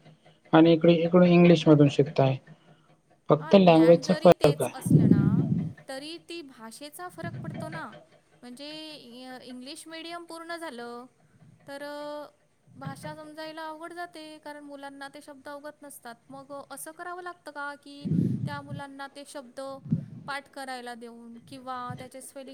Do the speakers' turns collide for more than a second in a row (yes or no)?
yes